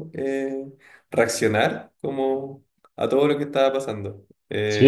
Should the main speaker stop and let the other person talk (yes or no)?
yes